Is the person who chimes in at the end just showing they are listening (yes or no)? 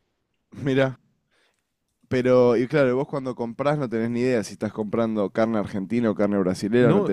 no